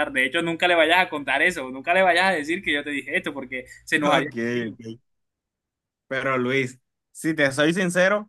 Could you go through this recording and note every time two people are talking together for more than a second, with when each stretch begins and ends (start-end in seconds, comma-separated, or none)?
none